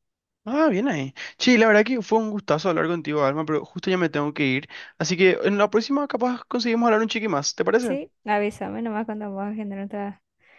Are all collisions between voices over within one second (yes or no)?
yes